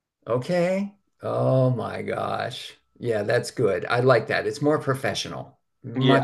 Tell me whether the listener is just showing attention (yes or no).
no